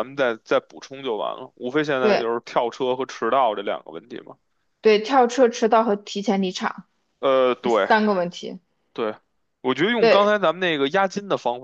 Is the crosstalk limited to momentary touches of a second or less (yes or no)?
yes